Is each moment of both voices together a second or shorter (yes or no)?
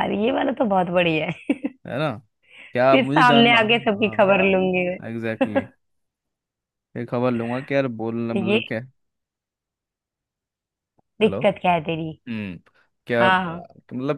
no